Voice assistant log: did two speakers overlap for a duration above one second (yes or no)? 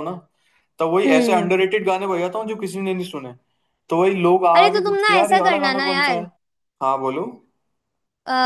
yes